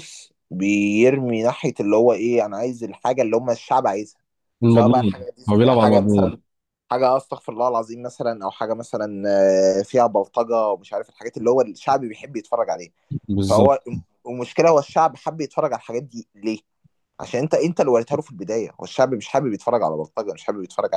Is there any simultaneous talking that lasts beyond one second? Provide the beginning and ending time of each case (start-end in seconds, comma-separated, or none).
4.7-6.4